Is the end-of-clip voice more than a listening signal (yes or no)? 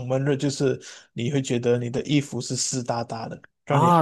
yes